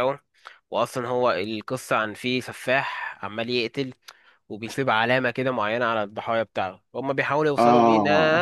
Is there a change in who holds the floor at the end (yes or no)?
no